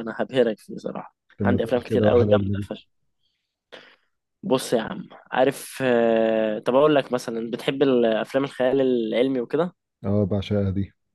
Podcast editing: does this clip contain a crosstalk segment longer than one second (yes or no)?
yes